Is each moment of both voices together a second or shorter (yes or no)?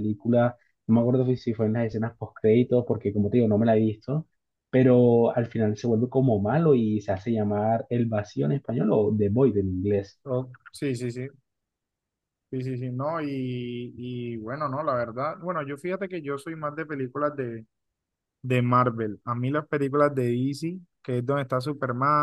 yes